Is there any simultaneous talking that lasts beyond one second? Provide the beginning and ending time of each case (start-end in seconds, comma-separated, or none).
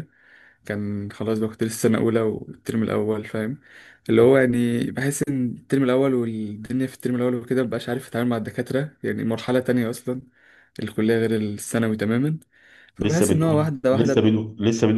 13.0-14.3